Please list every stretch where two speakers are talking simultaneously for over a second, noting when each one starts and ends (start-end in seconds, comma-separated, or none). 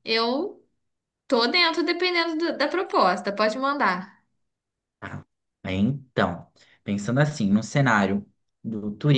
none